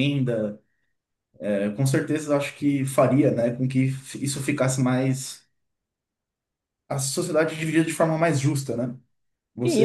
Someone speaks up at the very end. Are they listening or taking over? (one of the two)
taking over